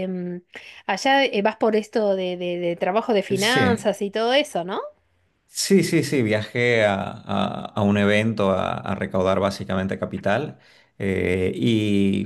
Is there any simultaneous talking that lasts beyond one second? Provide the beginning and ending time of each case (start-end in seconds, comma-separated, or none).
none